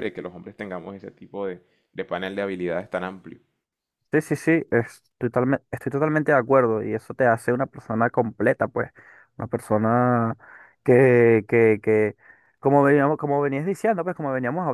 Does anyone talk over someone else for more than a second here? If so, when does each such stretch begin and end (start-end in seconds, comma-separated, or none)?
none